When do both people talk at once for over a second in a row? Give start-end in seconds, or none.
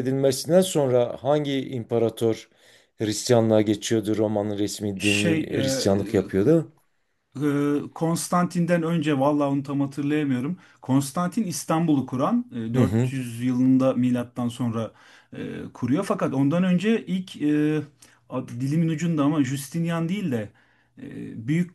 none